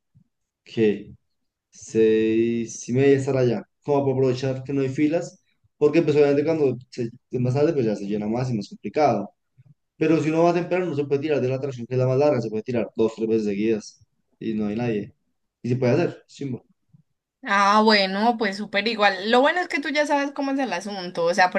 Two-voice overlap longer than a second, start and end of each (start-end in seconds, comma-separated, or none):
none